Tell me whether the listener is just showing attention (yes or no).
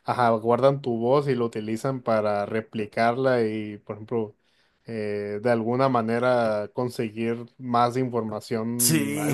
yes